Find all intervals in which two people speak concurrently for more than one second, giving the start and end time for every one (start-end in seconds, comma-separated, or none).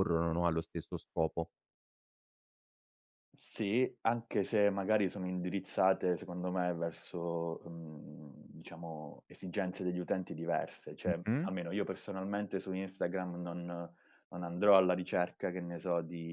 none